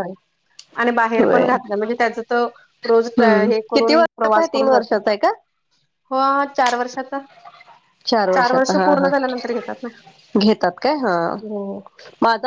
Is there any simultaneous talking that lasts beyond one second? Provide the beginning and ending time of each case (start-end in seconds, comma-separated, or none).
3.0-5.0